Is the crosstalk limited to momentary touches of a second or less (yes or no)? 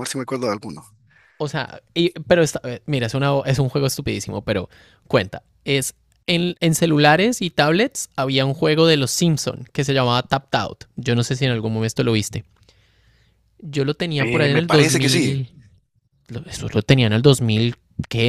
no